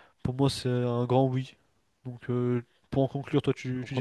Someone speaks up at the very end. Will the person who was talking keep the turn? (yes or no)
no